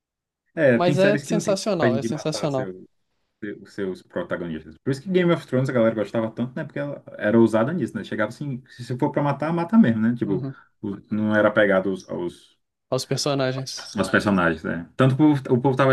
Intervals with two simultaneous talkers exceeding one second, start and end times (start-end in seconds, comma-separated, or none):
0.8-2.7